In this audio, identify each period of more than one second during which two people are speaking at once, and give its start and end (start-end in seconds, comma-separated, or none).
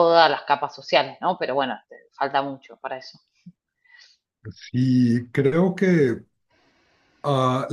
none